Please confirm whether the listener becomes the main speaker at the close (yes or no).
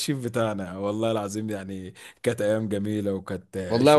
yes